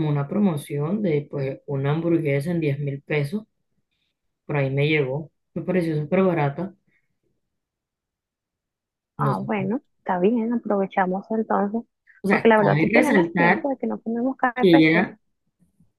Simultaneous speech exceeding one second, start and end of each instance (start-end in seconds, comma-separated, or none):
12.3-13.6